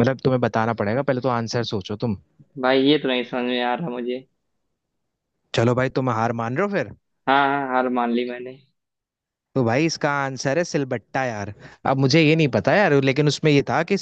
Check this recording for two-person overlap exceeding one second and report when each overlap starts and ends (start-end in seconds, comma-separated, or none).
none